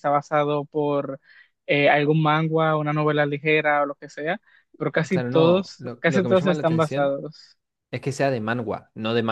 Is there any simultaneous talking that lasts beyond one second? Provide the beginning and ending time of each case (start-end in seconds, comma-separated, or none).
5.1-7.2